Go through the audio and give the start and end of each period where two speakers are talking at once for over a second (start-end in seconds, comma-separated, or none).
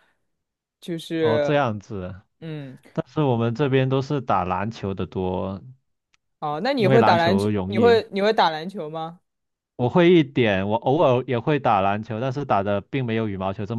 6.8-8.0